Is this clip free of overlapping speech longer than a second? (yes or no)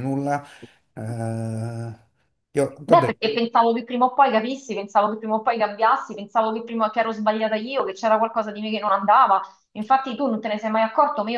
yes